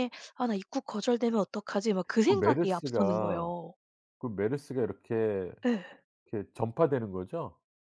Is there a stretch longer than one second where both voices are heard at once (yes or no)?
yes